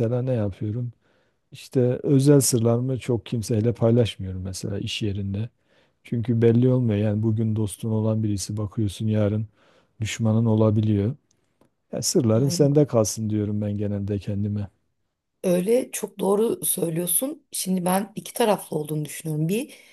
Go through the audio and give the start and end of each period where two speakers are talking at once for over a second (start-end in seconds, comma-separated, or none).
none